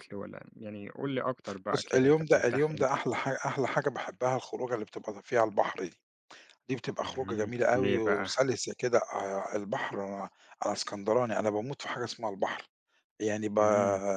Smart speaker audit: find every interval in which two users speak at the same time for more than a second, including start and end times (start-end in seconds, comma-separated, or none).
1.7-3.0, 7.0-8.3